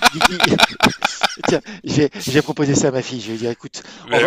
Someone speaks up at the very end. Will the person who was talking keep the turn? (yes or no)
yes